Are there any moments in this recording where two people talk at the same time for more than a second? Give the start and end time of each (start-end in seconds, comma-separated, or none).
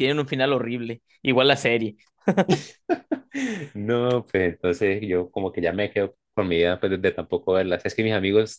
none